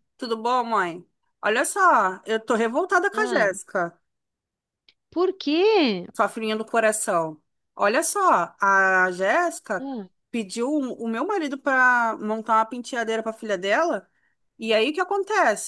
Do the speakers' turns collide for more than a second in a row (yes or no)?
no